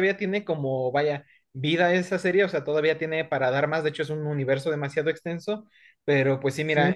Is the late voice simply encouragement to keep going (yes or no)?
yes